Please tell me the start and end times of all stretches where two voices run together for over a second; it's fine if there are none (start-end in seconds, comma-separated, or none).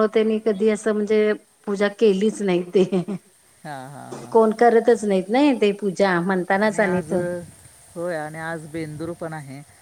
none